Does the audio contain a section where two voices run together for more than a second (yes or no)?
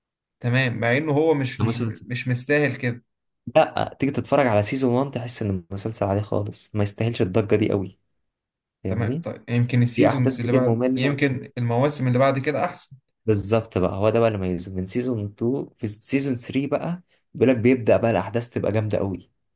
yes